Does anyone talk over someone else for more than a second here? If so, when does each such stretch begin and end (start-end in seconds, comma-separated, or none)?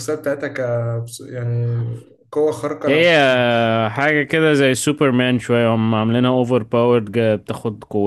none